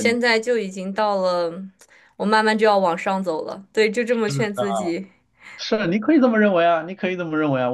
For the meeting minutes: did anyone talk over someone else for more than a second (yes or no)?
no